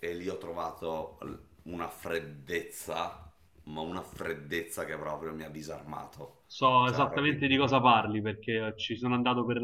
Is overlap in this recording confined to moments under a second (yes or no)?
yes